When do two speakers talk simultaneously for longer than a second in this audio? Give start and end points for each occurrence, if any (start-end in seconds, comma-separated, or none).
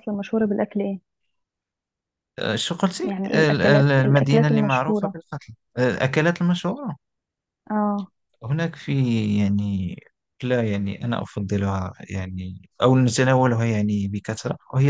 3.0-5.2